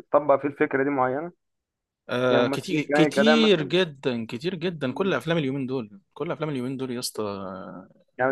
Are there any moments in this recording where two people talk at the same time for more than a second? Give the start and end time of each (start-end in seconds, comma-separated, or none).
2.3-3.7